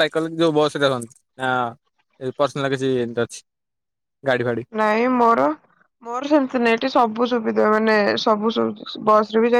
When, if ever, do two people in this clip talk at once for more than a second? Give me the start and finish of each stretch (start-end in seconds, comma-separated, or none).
none